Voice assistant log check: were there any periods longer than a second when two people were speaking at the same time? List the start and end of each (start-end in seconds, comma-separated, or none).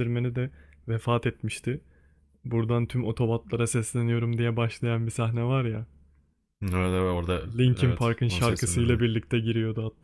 7.6-9.0